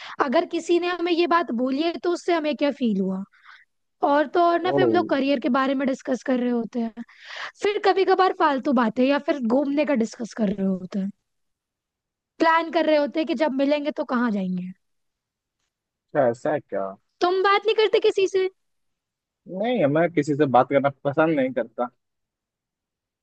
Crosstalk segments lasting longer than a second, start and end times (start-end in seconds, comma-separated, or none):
none